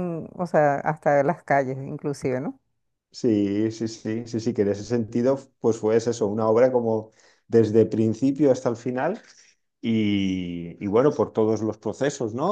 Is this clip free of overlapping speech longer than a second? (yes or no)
yes